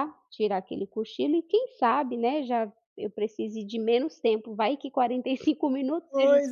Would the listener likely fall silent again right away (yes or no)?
no